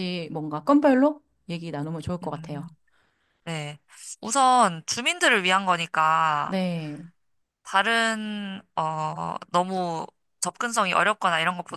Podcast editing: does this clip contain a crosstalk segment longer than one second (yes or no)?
no